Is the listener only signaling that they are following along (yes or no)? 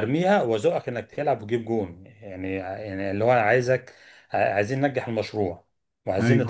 no